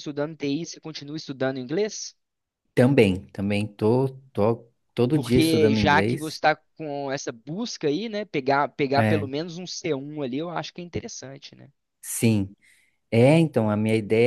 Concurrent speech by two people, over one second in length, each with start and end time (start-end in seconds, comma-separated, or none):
5.1-6.4